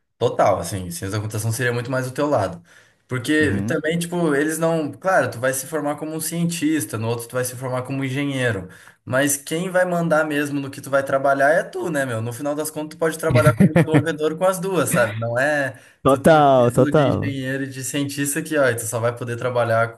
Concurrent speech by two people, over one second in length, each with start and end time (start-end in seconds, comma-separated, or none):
16.0-17.4